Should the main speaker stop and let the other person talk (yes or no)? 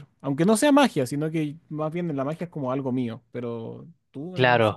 yes